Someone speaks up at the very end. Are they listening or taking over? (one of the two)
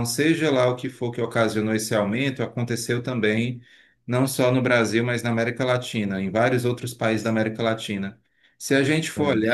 listening